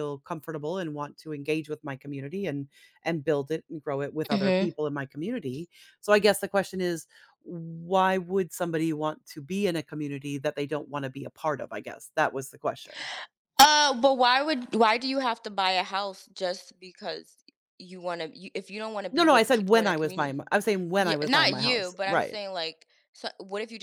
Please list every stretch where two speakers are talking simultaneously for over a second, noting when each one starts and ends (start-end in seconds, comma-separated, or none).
19.1-20.4, 21.0-22.4